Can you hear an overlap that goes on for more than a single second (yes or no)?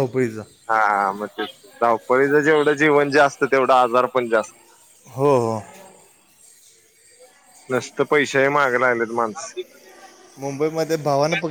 no